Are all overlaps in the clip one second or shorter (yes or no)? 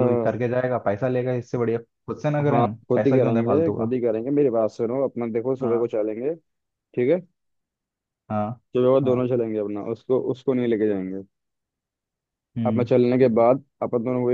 no